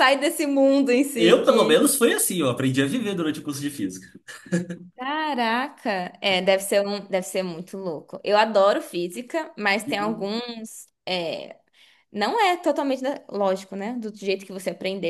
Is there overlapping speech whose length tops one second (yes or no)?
no